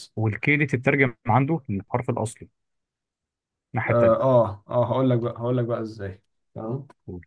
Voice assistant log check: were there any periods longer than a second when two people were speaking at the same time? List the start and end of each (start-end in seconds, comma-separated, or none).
none